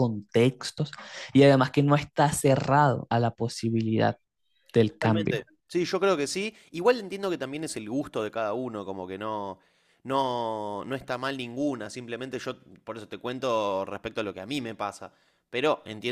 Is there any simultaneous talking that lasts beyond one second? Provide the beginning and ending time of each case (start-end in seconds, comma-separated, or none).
none